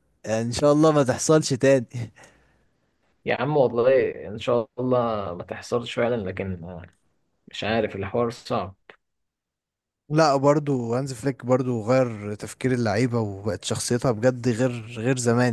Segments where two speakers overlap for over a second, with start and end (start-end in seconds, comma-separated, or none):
none